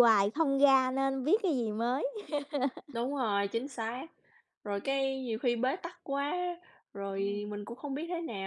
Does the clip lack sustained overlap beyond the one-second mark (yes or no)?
yes